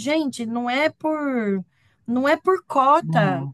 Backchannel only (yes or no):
yes